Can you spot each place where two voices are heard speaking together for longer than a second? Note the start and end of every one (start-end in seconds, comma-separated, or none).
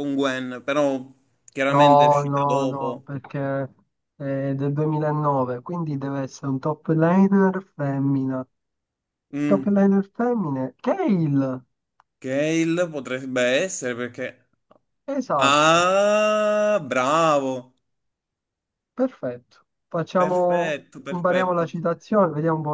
1.7-3.1, 20.2-21.7